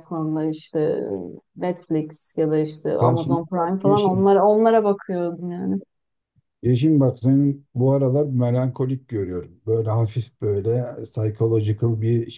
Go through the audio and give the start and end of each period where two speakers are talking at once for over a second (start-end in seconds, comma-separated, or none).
3.0-4.3